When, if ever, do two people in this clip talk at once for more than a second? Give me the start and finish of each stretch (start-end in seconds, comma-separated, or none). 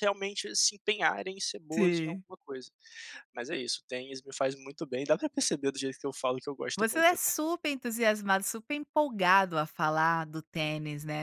none